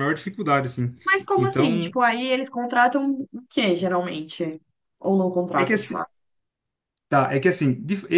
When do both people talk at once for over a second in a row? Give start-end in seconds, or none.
none